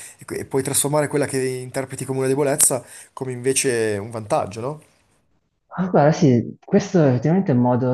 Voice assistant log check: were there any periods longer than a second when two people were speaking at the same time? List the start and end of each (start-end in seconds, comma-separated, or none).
none